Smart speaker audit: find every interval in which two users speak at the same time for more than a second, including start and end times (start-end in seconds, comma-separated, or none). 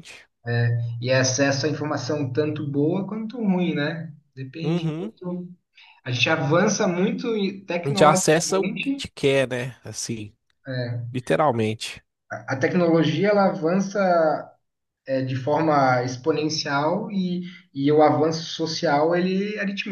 7.8-9.1